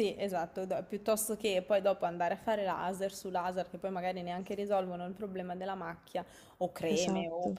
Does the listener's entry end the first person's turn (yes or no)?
no